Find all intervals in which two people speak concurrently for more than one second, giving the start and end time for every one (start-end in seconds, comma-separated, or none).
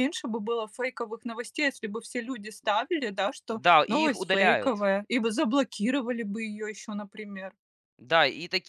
3.5-4.8